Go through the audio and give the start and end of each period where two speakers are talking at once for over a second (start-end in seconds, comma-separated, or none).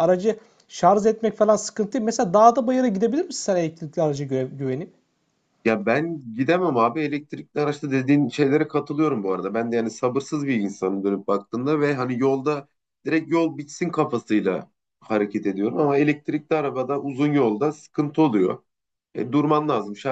none